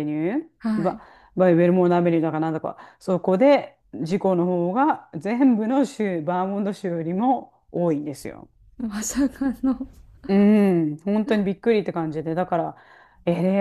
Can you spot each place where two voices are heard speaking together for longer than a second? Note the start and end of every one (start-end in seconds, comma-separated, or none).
none